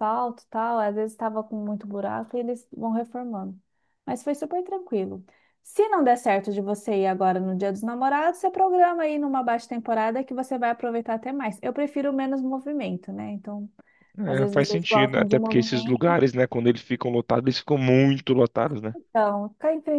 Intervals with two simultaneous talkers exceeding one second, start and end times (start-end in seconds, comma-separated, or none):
14.2-16.2